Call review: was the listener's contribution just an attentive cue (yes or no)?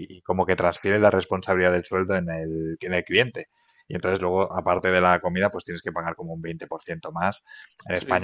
yes